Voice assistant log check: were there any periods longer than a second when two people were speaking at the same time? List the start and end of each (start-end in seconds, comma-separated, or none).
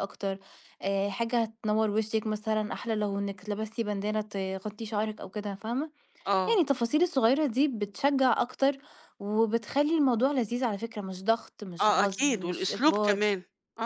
11.8-13.2